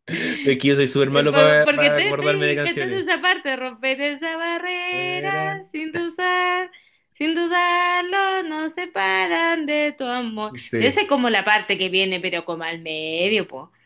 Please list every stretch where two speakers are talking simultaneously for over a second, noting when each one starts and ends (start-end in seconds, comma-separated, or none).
1.1-3.1